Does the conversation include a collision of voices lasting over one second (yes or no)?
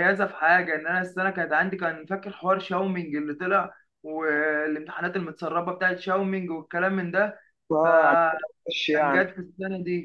yes